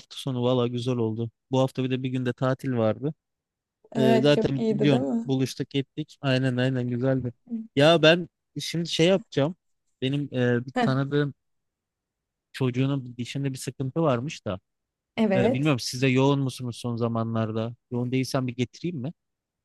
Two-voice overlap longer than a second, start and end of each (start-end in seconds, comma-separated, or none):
4.0-5.3